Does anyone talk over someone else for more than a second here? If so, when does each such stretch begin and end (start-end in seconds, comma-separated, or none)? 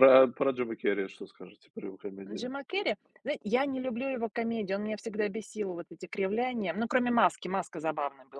none